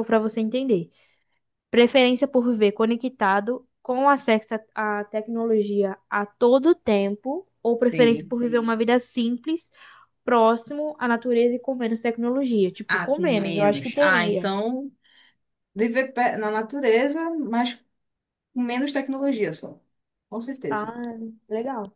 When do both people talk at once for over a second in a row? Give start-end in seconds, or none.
12.9-14.5